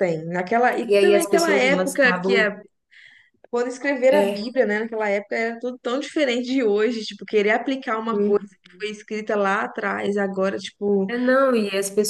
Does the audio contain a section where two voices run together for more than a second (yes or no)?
yes